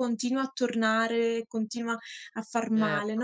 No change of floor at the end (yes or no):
no